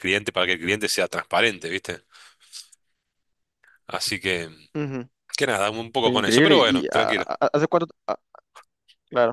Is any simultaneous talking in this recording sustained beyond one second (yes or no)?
yes